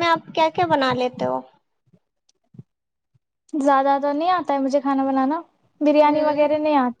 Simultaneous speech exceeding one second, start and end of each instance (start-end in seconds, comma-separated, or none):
none